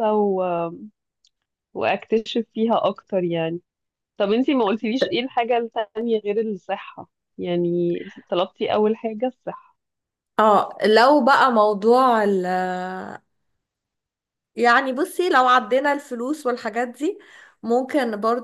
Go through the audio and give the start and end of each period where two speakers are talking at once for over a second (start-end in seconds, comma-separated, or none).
none